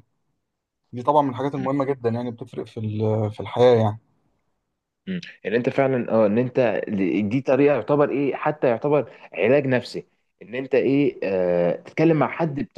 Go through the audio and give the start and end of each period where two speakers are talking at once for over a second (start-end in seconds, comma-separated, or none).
none